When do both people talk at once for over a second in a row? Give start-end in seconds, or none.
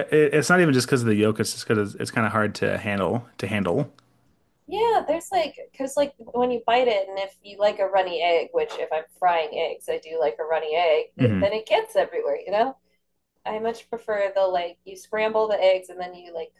none